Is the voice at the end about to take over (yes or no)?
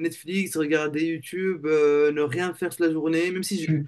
yes